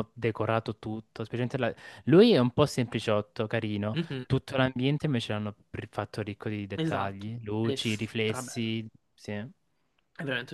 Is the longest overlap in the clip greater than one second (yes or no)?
yes